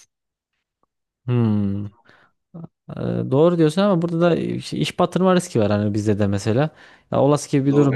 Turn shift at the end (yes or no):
no